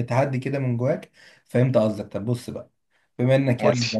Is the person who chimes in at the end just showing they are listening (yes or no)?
yes